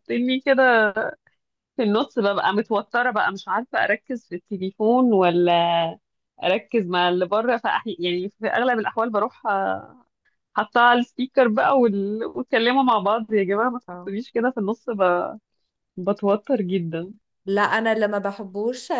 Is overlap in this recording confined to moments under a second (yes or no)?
yes